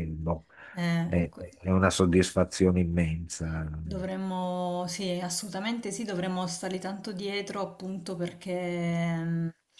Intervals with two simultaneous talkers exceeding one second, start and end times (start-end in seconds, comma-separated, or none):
none